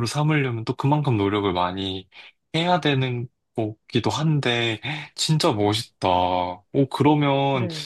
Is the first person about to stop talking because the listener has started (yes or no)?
no